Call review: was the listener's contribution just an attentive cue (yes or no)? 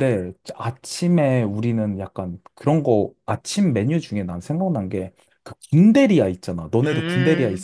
no